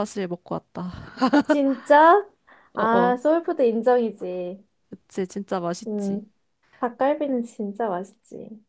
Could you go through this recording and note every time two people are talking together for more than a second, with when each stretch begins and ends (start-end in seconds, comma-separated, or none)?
none